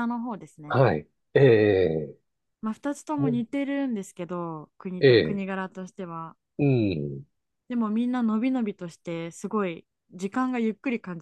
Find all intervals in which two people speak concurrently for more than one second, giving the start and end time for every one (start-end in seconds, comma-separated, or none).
none